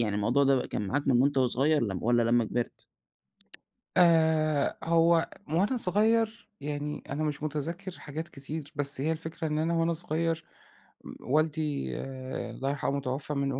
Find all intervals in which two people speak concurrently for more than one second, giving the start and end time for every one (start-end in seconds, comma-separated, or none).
none